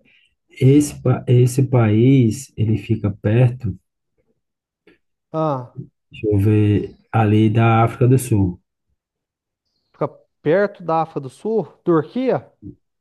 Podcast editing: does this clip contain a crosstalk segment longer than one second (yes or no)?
no